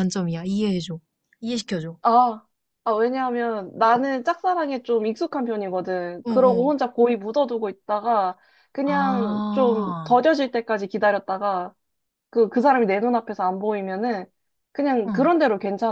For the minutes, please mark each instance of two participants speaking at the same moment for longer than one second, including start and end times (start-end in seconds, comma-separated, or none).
8.9-10.1